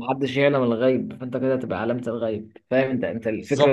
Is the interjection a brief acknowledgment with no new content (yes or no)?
yes